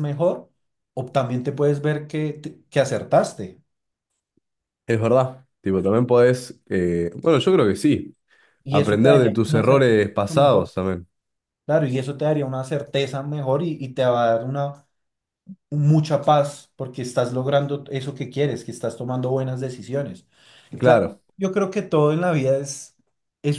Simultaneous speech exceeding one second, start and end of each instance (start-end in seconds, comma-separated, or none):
8.7-10.7